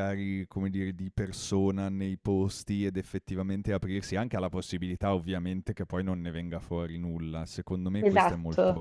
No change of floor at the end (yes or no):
yes